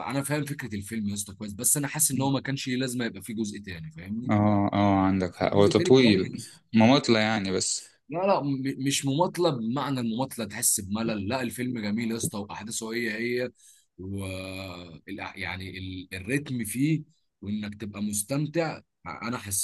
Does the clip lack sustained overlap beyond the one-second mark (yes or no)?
no